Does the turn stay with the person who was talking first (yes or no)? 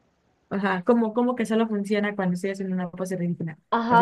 no